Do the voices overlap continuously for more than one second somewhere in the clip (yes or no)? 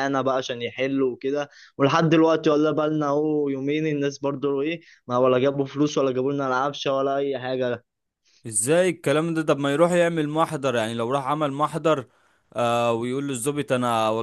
no